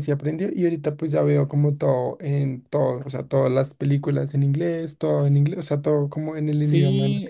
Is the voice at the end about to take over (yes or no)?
yes